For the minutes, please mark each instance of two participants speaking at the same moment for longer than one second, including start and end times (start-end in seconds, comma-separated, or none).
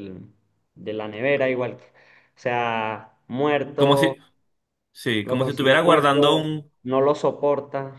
5.2-6.5